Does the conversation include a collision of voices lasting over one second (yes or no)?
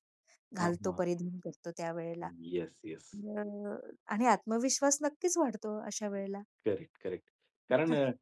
no